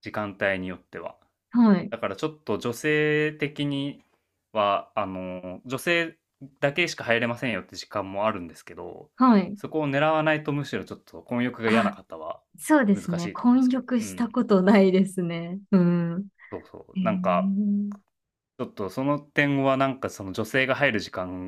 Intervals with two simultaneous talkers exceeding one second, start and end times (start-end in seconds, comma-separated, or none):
12.9-14.4